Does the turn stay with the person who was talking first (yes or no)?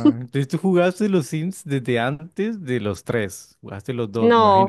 no